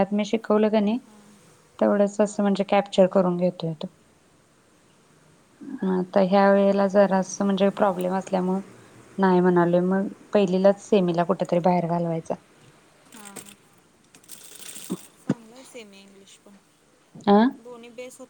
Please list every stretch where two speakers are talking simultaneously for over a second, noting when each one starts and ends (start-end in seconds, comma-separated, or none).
none